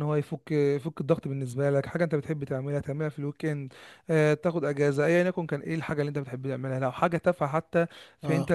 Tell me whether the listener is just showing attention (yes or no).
yes